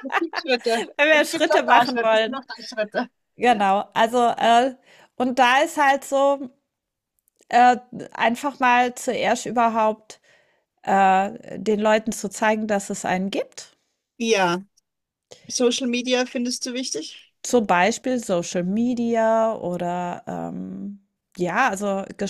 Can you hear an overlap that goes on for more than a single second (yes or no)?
yes